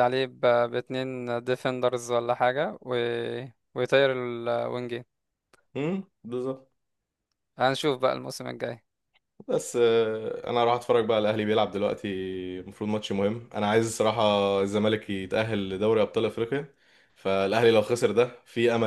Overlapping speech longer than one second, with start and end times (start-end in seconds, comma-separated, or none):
none